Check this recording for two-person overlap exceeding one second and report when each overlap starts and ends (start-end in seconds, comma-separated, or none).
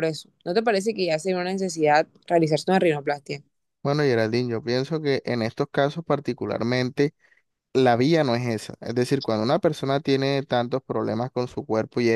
none